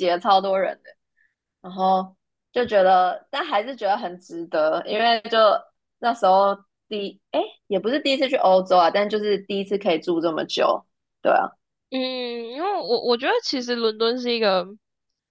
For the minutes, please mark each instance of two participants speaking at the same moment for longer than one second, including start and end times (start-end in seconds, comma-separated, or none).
none